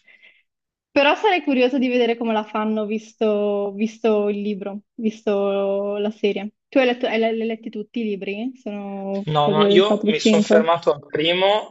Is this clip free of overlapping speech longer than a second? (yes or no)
no